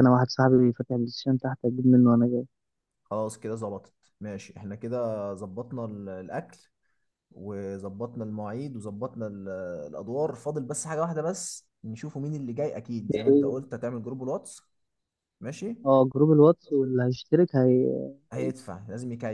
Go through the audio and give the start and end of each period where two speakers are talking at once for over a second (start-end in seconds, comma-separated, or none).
none